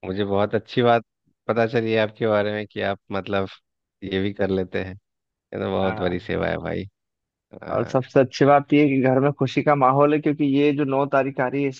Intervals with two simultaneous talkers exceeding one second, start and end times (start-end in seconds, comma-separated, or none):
none